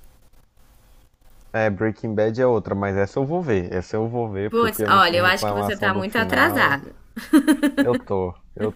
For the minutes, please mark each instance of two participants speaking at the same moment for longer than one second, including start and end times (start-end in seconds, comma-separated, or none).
4.5-6.8